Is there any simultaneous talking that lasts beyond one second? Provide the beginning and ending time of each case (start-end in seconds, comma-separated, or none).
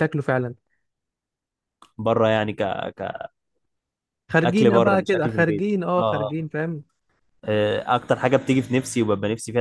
4.4-6.5